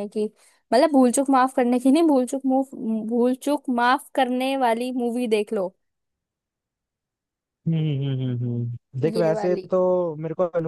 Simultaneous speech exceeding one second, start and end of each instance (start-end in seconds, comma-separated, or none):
none